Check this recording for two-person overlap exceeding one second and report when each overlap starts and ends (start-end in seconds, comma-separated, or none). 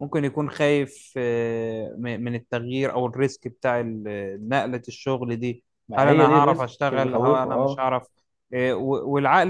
5.9-7.9